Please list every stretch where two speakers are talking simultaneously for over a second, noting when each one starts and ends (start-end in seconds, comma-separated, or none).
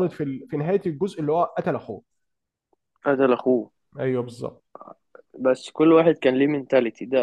none